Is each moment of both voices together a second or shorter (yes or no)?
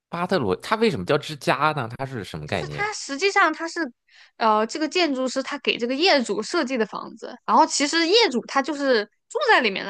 yes